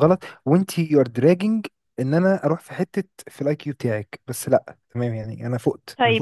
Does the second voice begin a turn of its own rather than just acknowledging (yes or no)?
yes